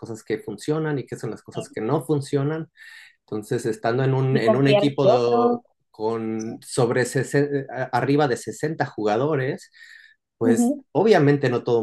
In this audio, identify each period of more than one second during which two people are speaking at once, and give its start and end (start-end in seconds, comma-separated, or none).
4.3-5.6